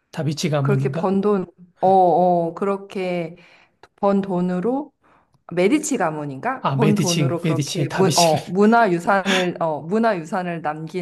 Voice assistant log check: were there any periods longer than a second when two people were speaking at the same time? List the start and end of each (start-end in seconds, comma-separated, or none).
6.6-8.4